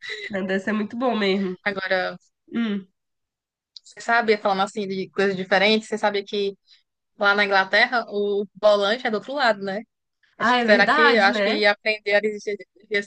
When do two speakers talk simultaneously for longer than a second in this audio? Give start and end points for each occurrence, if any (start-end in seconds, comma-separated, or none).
10.4-11.6